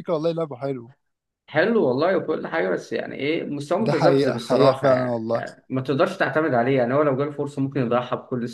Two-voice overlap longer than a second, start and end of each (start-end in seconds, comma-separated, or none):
3.8-5.3